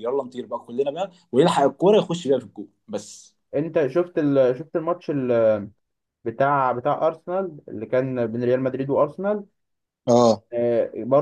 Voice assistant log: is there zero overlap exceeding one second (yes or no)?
yes